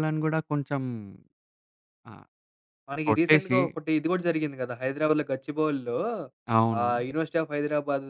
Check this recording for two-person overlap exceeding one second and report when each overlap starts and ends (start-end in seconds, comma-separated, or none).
none